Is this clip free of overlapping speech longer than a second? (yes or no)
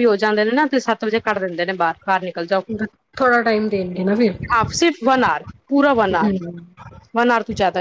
yes